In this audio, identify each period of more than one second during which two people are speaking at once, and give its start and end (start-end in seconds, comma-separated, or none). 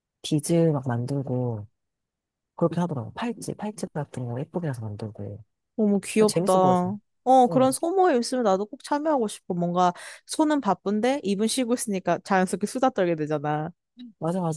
none